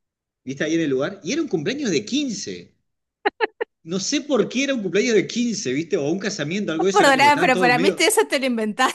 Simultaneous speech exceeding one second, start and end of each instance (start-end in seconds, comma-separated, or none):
6.8-8.1